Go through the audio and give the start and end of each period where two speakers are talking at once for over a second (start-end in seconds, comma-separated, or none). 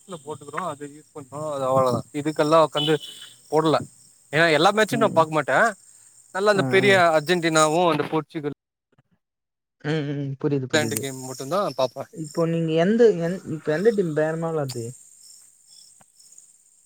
10.6-12.0